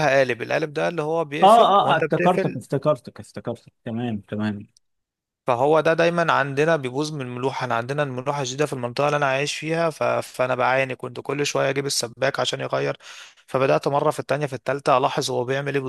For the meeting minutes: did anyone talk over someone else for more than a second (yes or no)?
yes